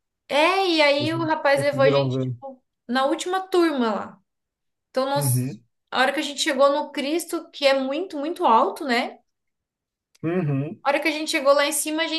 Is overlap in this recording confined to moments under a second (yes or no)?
no